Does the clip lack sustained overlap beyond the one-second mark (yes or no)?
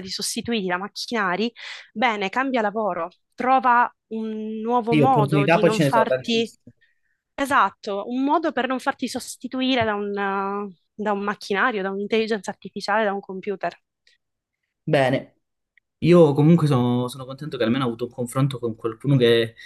no